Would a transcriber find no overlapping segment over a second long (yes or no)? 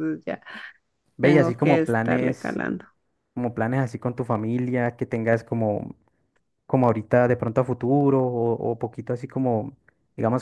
no